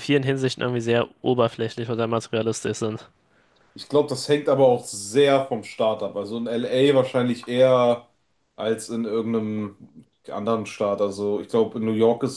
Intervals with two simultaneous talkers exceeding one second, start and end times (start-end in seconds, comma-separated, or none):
none